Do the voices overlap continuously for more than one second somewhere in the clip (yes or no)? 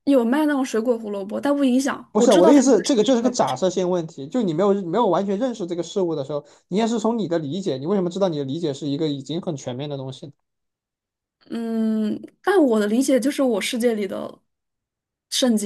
yes